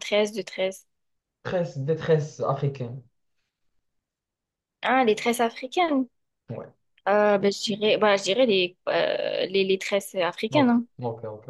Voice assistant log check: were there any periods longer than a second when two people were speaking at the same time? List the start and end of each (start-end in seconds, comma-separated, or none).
none